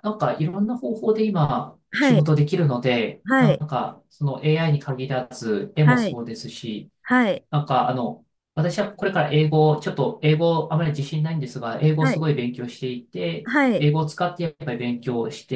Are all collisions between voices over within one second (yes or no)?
yes